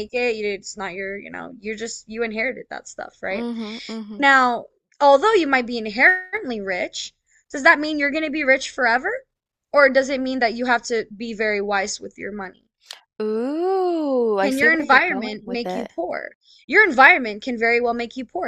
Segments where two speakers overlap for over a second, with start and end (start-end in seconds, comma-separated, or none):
14.4-15.9